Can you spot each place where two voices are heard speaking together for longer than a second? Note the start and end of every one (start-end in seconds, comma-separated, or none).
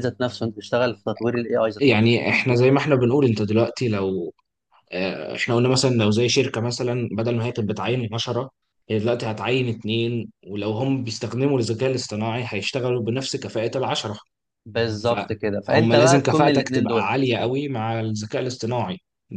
15.0-17.3